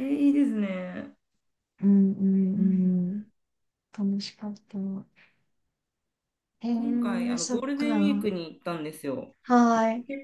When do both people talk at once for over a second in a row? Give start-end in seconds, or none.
6.7-8.3